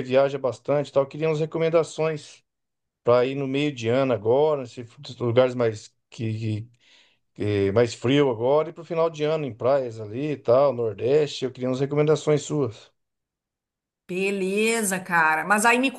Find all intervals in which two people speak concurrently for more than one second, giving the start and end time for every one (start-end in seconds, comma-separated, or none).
none